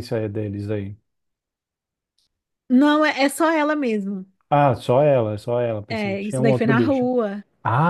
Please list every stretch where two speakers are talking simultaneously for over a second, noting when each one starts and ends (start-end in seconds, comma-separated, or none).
5.9-7.1